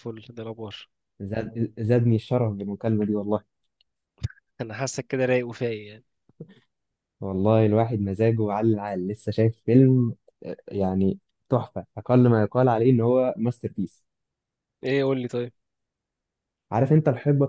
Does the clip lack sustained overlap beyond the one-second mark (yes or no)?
yes